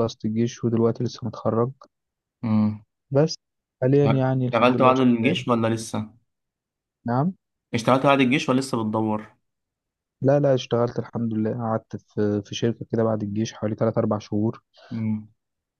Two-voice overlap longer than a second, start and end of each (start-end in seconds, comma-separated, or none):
4.0-5.3